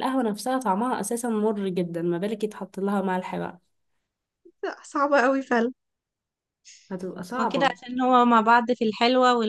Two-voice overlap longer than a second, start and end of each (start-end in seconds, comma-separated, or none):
none